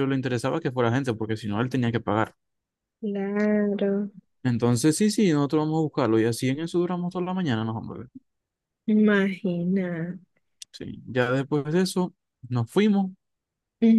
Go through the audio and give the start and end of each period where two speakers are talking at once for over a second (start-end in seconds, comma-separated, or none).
none